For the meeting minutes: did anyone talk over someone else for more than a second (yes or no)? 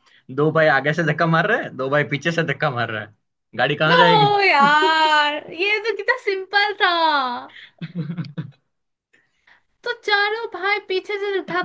no